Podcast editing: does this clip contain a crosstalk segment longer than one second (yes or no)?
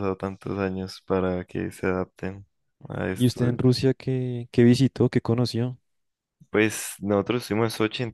no